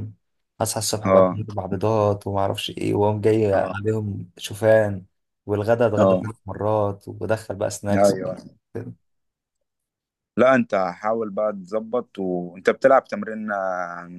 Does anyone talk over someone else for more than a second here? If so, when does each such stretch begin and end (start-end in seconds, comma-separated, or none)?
none